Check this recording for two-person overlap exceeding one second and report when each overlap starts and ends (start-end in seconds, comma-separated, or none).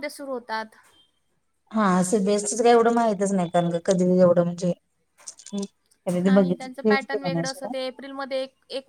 6.2-7.7